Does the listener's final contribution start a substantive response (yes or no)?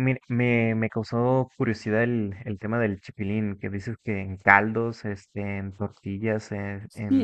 yes